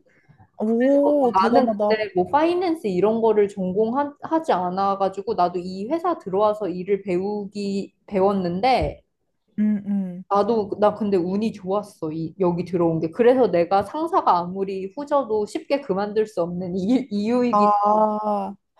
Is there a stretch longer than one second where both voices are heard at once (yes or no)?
yes